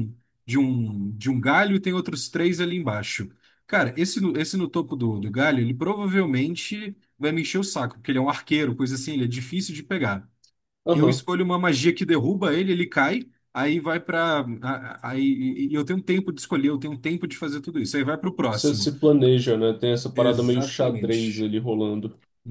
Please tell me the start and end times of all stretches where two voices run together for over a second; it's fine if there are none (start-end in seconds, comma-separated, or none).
20.1-21.5